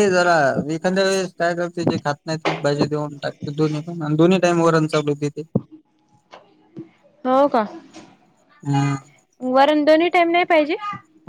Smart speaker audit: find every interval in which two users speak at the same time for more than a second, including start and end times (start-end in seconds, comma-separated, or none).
none